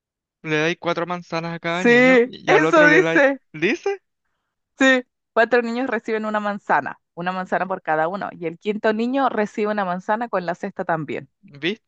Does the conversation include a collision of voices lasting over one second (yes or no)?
yes